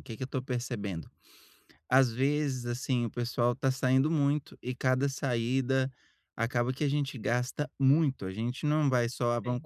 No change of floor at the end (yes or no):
yes